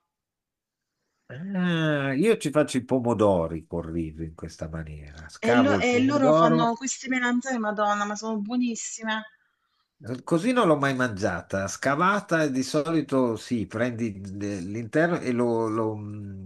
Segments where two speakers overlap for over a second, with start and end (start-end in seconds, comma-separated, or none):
5.5-6.7